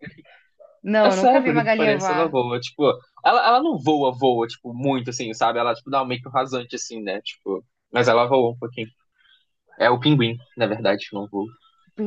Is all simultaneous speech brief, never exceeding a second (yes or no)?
no